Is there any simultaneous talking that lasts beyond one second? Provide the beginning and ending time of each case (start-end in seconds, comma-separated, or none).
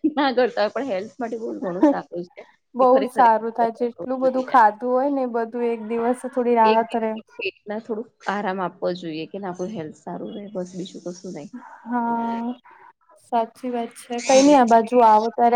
2.8-4.5